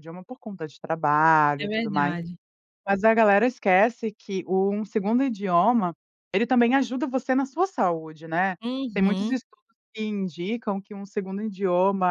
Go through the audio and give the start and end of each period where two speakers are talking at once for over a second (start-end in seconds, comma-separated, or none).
none